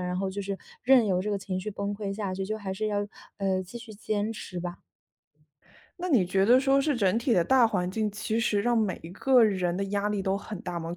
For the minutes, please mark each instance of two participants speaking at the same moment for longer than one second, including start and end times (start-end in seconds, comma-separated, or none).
none